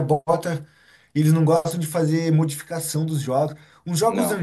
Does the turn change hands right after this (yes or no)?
no